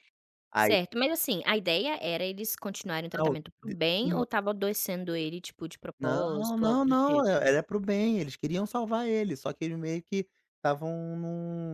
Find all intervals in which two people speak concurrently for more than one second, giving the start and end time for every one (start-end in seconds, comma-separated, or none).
6.0-7.4